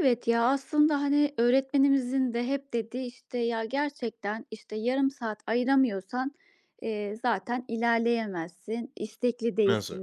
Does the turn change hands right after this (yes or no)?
no